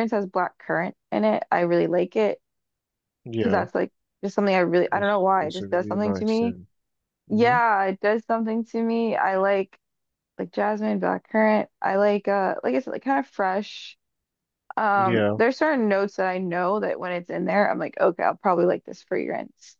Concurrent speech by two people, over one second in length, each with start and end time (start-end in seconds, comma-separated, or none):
4.9-6.6